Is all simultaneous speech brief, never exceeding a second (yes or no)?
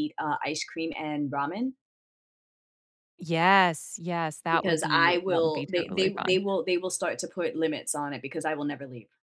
no